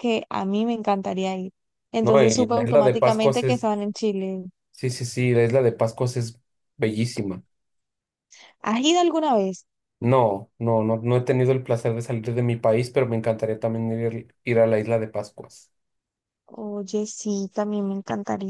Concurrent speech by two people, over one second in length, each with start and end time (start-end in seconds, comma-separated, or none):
2.0-3.7